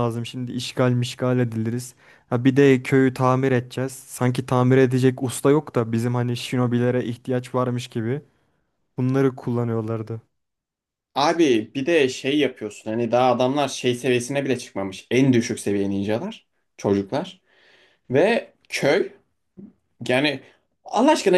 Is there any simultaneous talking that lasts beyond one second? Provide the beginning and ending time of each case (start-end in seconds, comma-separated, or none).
none